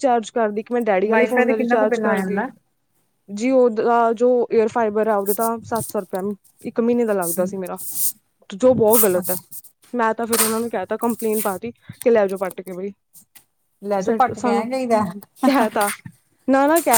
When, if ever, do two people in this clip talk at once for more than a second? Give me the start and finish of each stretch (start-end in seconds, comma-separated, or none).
1.1-2.4